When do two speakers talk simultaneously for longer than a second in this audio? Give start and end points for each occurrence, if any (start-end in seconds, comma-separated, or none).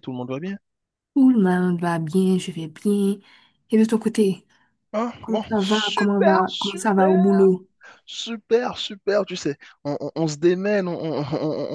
5.2-7.3